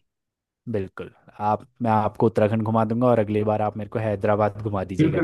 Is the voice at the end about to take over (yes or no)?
yes